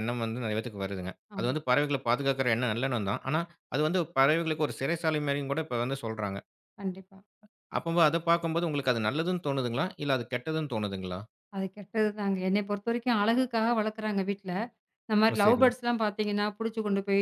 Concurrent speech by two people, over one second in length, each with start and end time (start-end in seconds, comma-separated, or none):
none